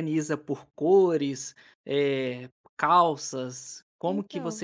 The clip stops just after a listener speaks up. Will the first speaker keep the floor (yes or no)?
yes